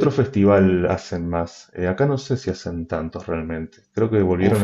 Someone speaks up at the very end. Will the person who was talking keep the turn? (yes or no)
no